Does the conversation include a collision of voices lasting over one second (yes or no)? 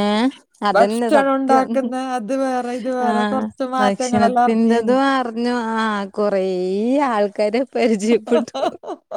yes